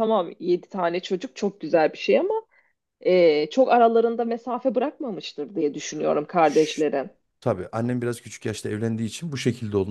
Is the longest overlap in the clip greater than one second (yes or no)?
no